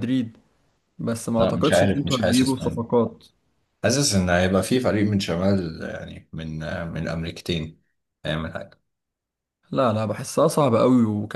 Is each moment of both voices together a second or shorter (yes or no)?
no